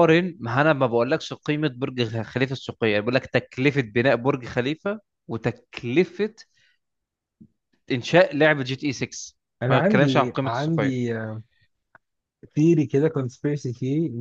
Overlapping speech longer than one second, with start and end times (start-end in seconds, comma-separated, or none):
9.7-11.0